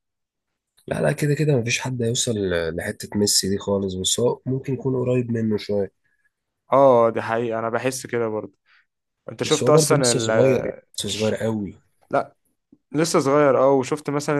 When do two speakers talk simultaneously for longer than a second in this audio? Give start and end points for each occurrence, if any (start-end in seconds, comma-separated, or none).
9.4-11.4